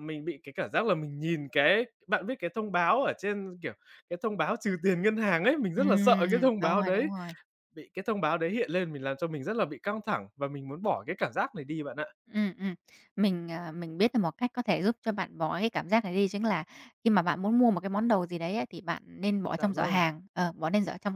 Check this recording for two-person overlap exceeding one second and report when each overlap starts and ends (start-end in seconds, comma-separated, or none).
5.8-7.1